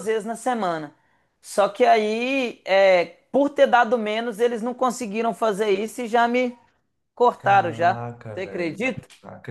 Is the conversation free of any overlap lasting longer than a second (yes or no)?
no